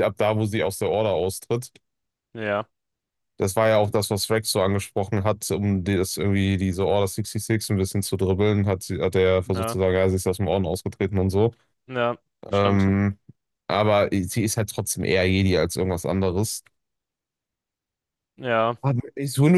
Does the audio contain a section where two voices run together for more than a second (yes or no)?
no